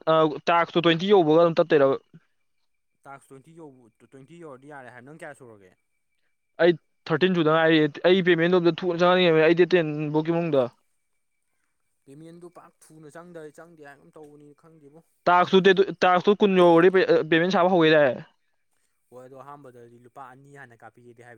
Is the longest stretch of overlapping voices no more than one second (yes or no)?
yes